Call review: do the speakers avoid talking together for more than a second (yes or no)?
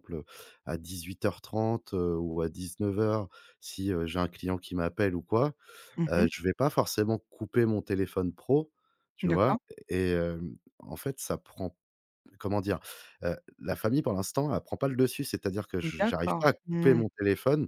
no